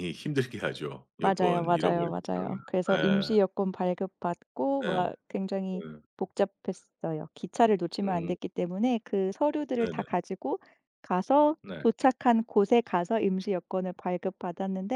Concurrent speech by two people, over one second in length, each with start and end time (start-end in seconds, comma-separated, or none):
1.2-2.6